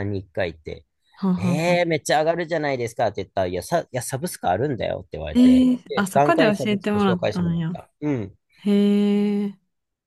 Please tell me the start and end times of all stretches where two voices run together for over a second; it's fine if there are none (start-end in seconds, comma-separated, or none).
5.3-7.8